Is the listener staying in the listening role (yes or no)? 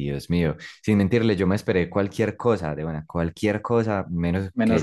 yes